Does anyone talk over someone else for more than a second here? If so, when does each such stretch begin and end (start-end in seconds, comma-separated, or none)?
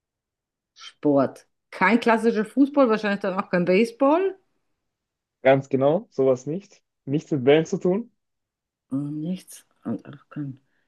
none